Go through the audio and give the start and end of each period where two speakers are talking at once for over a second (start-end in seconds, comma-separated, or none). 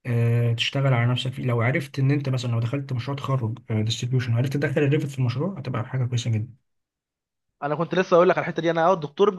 none